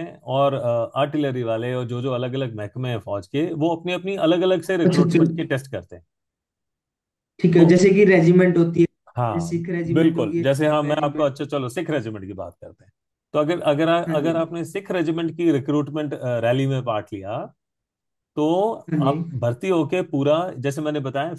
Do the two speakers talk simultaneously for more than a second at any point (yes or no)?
yes